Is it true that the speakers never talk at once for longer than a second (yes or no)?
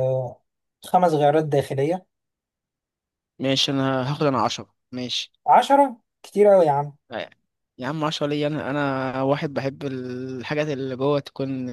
yes